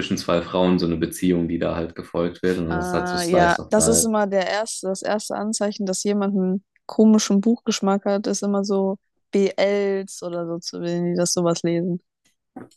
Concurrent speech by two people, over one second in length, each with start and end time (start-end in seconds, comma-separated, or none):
2.7-4.1